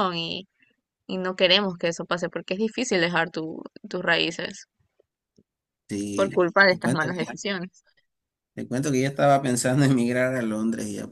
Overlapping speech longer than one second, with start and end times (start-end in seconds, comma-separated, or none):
6.1-7.4